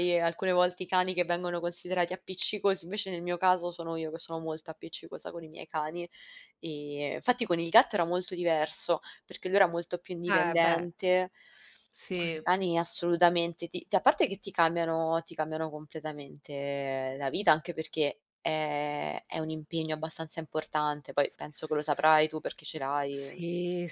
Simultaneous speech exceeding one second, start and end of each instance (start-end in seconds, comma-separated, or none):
none